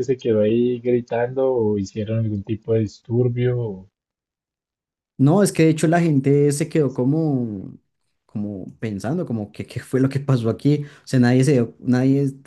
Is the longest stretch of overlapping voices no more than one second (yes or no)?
yes